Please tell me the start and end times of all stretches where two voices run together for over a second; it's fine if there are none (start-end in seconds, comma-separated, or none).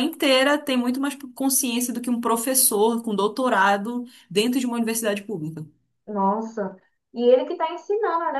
none